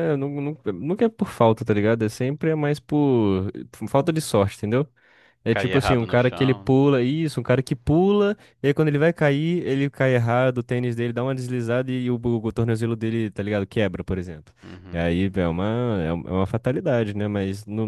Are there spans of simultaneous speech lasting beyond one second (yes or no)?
yes